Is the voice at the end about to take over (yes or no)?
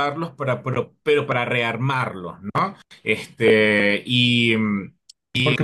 yes